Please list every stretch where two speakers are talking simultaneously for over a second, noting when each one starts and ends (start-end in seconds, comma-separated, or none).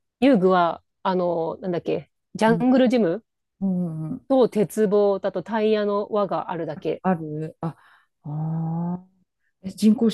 none